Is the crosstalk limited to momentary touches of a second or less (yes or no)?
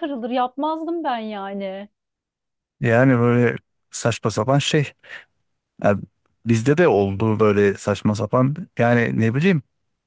yes